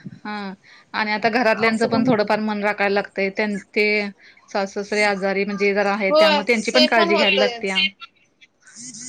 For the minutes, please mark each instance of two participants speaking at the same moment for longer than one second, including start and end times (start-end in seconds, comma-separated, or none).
6.1-7.8